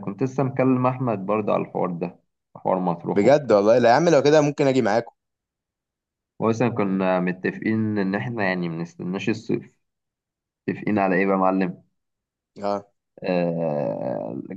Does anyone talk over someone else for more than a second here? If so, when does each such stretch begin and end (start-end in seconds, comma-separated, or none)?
none